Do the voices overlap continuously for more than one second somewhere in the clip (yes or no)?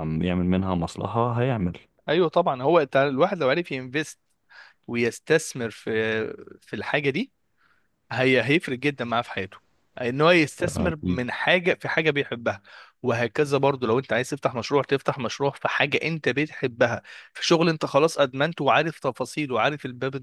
no